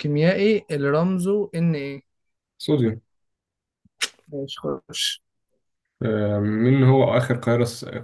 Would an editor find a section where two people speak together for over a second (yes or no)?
no